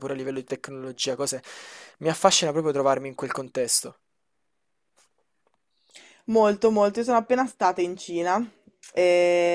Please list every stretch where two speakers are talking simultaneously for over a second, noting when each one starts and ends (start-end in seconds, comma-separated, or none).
none